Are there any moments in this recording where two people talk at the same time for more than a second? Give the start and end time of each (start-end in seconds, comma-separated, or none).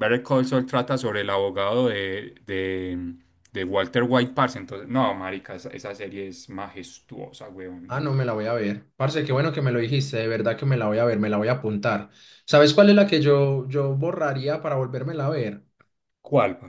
none